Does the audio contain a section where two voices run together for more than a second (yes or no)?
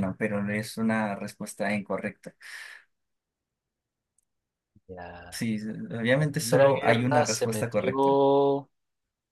yes